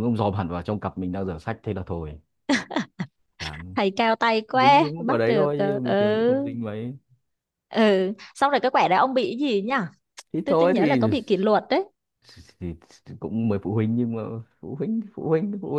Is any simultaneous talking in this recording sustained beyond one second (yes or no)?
yes